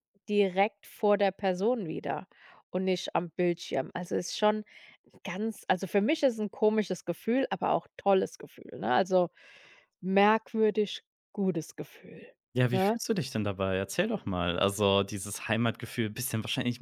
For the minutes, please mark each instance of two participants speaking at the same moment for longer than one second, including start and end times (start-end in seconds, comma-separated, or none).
none